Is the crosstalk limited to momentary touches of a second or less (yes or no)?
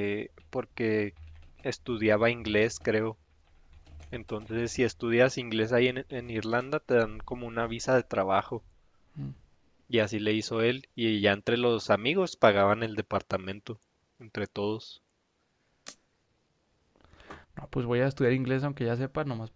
yes